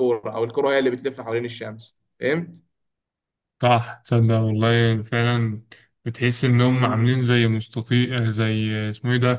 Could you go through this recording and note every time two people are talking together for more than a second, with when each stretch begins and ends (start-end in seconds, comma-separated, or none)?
none